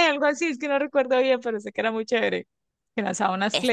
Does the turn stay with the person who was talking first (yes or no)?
yes